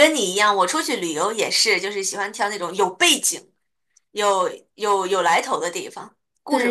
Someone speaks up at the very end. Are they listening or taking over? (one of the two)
taking over